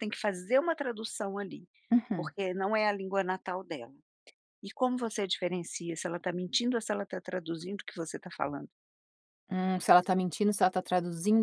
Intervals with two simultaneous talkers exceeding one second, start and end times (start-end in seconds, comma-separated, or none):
none